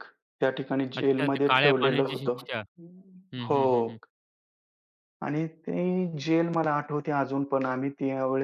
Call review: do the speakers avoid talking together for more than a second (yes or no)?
no